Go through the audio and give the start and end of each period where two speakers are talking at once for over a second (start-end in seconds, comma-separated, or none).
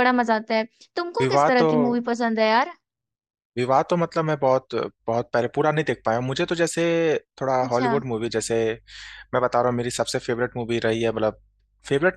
none